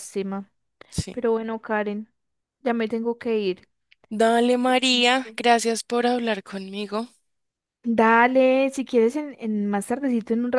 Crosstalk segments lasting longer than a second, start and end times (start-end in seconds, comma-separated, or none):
none